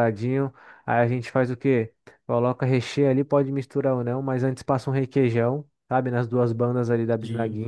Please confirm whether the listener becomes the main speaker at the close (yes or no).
no